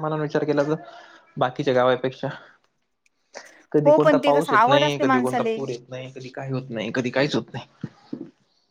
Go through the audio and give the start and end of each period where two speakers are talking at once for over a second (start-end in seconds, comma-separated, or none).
3.8-5.6